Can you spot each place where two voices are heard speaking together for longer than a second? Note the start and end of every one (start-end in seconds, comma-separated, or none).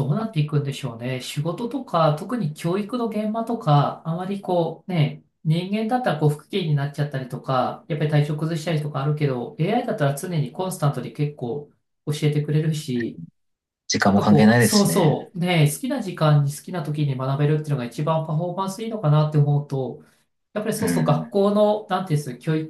14.1-15.3